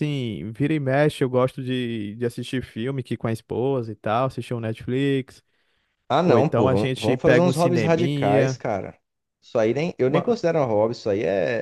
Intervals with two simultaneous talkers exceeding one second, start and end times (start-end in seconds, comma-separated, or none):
6.2-8.6